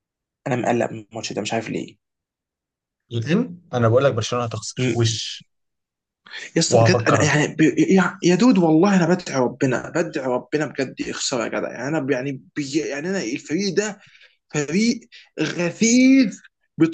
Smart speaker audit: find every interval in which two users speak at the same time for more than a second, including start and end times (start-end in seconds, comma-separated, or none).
none